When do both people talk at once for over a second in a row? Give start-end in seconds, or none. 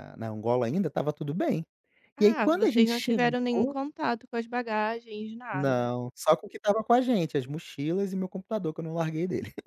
2.2-3.8